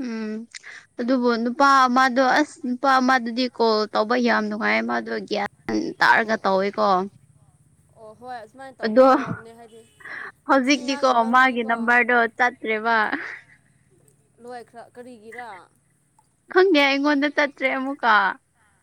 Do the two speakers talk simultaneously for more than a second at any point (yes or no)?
yes